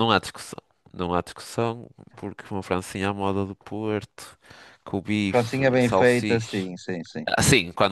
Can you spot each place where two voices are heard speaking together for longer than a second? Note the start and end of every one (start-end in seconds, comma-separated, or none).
5.3-6.7